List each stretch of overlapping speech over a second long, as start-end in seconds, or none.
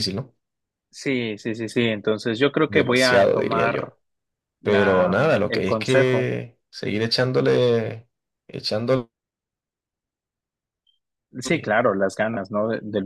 2.6-3.9, 4.6-6.3